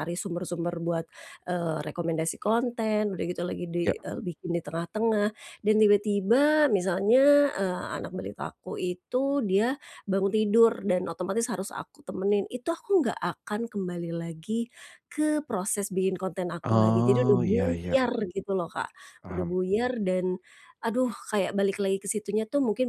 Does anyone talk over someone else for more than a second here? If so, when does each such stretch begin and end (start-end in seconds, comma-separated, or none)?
16.6-18.0